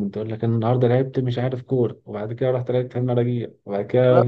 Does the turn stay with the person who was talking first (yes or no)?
no